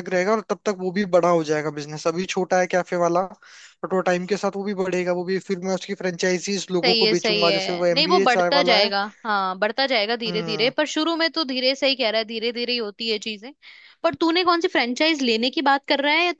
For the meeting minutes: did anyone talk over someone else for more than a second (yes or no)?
yes